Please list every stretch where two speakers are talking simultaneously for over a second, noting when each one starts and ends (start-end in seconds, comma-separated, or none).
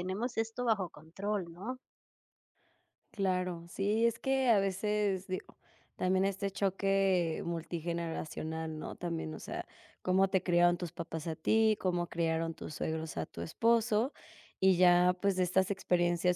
none